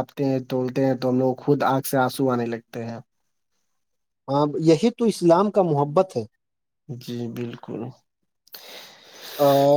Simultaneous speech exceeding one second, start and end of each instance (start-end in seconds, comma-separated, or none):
none